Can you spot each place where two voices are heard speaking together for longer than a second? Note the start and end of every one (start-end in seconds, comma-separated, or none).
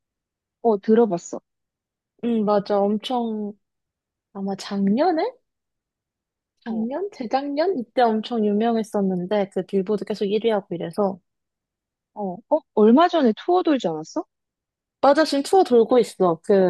none